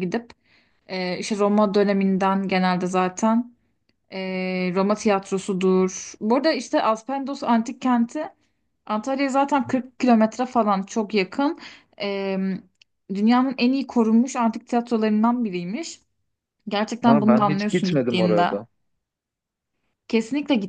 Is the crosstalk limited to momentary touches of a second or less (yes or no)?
no